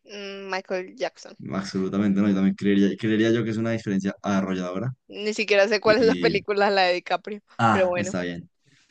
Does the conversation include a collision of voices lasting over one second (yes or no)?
no